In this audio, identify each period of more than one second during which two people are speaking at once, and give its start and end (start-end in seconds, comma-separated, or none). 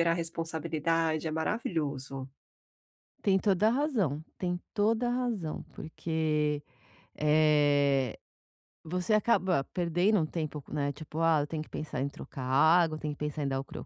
none